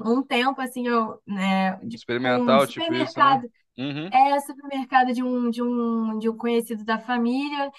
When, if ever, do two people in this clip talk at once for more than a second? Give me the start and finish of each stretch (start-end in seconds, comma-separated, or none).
1.9-3.4